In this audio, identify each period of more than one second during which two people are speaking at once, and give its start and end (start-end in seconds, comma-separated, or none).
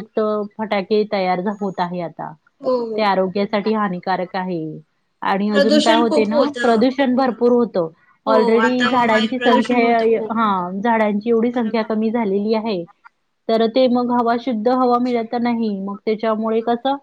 5.5-7.5, 8.3-10.3